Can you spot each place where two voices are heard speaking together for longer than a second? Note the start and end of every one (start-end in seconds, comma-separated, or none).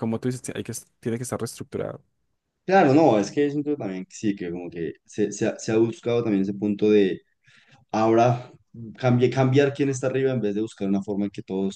none